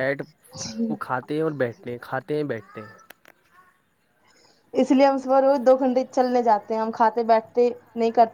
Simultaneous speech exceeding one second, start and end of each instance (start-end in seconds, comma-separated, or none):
none